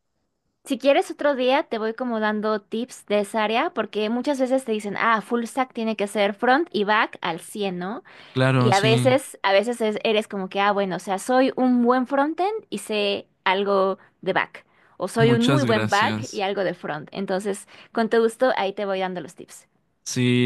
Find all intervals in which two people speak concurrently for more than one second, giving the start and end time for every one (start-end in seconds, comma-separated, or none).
15.2-16.4